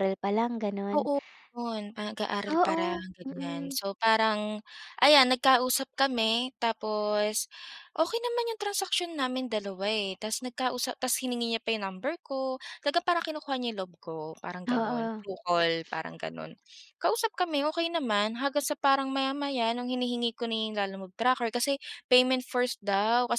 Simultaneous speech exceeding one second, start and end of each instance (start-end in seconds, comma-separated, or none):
2.5-3.8